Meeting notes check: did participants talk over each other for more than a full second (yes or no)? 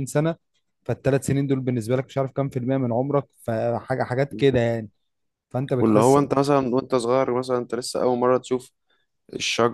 no